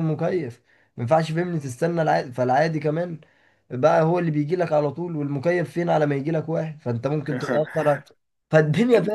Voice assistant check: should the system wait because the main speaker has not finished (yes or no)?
yes